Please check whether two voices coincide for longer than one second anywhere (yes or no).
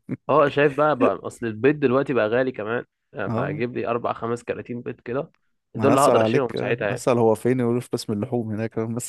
yes